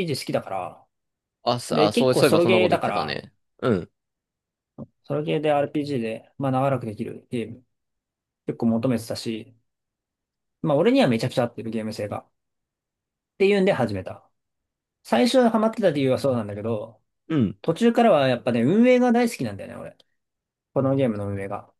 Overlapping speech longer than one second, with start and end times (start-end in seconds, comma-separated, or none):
1.7-3.2